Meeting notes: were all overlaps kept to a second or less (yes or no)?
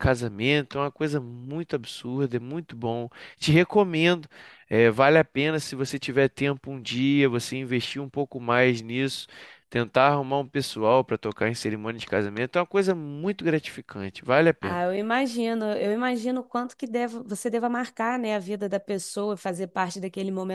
yes